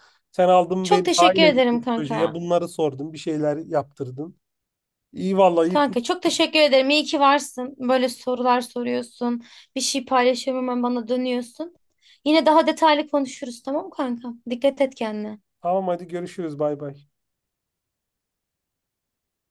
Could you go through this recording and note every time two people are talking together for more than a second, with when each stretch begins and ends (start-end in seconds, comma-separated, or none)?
0.8-2.4